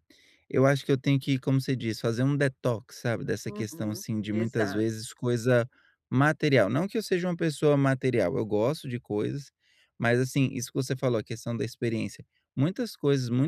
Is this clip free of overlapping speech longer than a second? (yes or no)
no